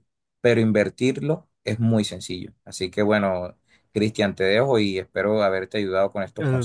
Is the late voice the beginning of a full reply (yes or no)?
yes